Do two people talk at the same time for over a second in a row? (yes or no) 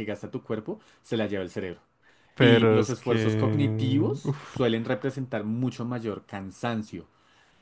yes